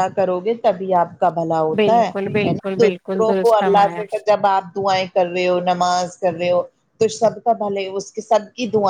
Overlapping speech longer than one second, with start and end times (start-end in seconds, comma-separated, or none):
2.8-4.0